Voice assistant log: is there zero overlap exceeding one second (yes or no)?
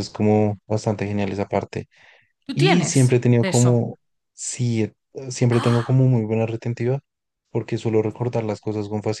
no